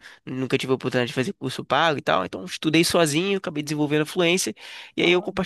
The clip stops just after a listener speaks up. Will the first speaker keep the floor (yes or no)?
yes